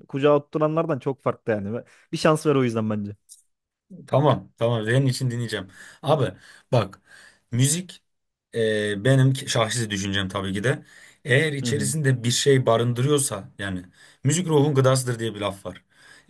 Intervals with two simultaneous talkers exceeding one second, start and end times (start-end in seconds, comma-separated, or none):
none